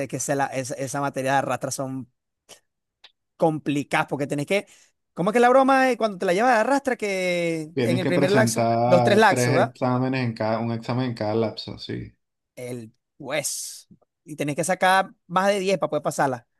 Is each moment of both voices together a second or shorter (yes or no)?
no